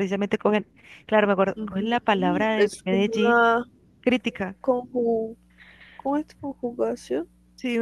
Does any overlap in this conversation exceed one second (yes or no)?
yes